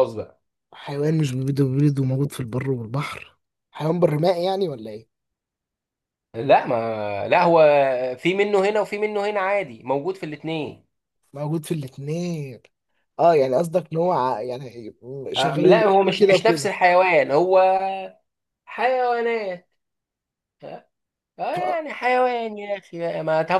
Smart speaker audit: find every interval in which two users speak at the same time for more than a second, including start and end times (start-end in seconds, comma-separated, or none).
15.4-16.7